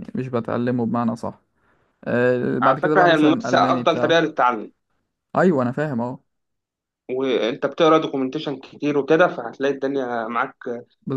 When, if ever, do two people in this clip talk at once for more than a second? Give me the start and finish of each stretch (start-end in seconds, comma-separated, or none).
2.6-4.2